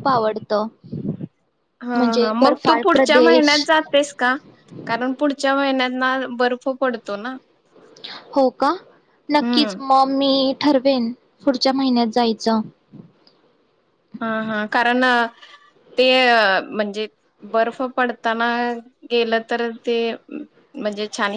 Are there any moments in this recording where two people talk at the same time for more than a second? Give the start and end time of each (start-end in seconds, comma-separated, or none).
1.9-3.7